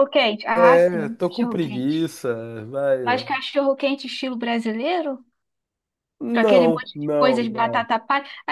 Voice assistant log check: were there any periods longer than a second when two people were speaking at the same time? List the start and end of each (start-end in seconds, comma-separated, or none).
0.5-2.0, 6.3-7.9